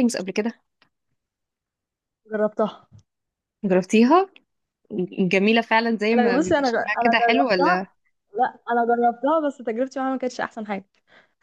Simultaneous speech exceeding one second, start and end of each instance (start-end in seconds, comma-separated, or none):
6.2-7.8